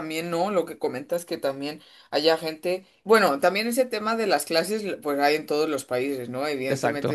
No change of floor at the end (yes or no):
yes